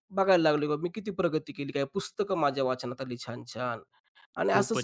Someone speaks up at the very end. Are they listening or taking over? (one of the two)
taking over